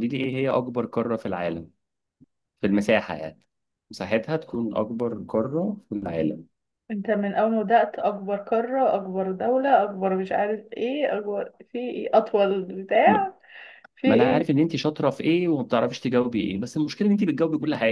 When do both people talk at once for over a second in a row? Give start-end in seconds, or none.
none